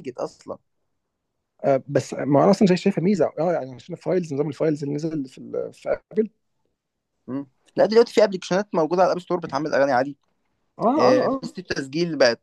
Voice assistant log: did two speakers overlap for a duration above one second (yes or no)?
no